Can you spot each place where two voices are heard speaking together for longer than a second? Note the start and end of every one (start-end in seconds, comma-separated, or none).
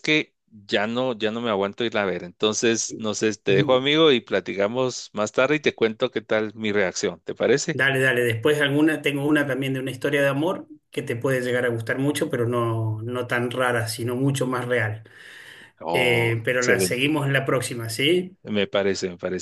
15.9-17.2